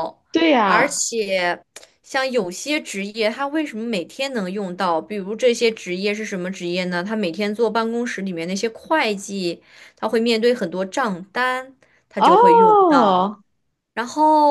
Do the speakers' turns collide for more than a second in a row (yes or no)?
yes